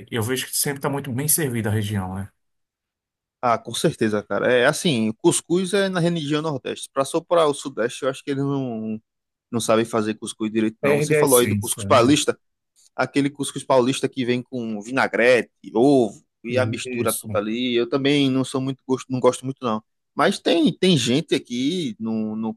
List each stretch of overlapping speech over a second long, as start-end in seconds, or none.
10.8-12.1